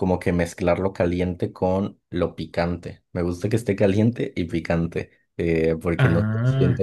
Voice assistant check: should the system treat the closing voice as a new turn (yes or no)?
no